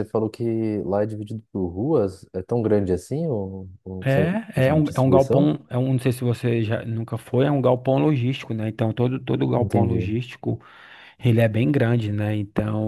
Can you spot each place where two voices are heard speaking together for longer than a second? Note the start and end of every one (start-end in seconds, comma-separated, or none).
4.0-5.5